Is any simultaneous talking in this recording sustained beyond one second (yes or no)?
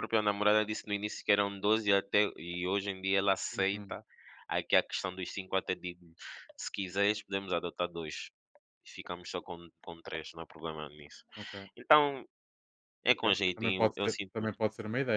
yes